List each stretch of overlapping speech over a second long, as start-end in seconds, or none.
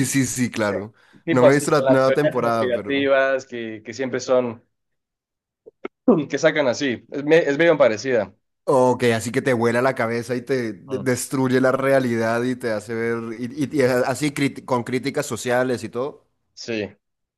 1.3-3.1